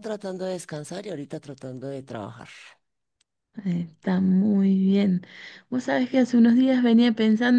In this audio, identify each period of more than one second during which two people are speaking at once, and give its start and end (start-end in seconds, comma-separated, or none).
none